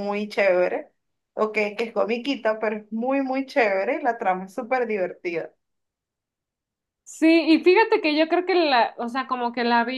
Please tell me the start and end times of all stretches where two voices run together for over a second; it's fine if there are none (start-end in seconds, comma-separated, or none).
none